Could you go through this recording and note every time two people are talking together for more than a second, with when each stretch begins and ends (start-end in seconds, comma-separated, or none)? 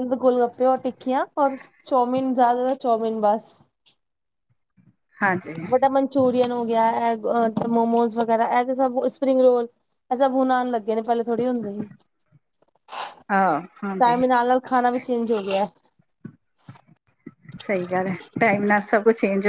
none